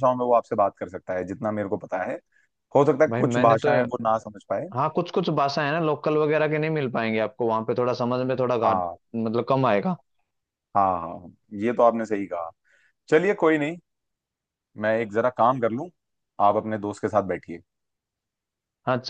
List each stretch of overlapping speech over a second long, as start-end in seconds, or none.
none